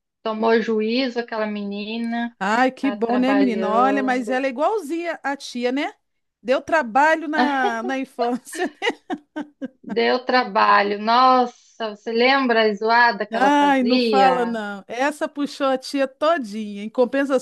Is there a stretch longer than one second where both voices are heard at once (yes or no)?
yes